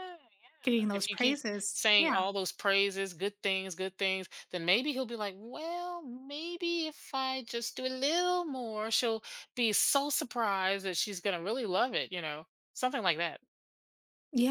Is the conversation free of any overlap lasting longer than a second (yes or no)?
no